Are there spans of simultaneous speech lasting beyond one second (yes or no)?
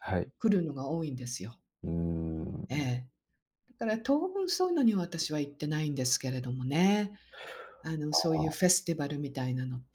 no